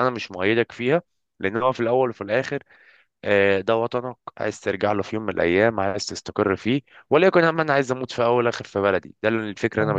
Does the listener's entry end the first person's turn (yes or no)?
yes